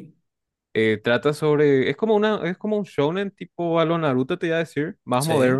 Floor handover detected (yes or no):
no